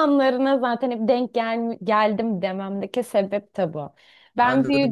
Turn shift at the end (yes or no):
yes